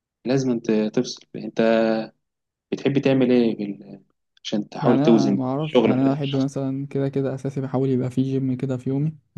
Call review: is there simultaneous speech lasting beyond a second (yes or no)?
yes